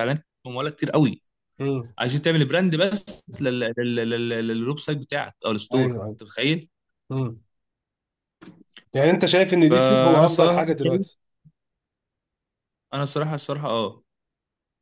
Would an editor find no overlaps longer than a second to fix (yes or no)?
no